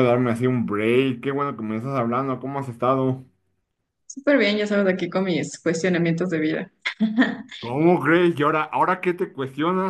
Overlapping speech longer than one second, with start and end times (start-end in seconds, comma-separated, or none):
none